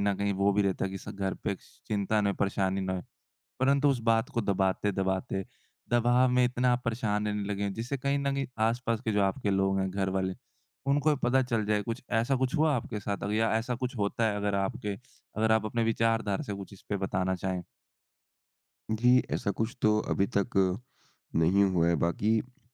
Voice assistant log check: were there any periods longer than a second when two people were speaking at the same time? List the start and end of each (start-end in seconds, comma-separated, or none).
none